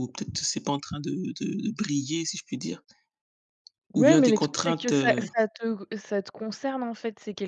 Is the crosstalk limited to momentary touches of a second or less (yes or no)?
no